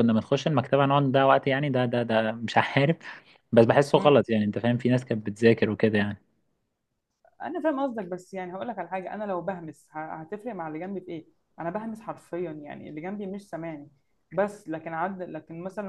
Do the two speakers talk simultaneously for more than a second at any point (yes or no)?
no